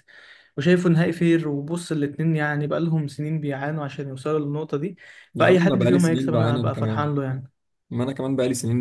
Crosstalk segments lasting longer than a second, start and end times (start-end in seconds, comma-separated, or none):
5.3-7.1